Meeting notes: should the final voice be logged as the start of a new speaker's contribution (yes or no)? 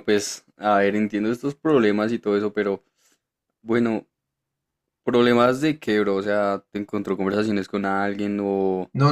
yes